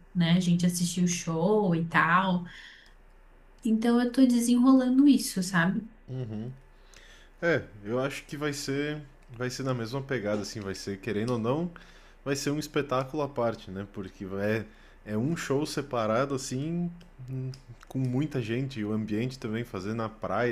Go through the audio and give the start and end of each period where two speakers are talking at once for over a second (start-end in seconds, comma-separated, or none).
none